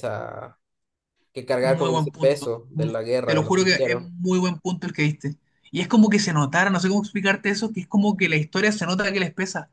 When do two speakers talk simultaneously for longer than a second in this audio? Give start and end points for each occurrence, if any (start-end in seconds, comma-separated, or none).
1.6-4.1